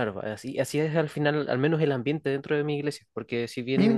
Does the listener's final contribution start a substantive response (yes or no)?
no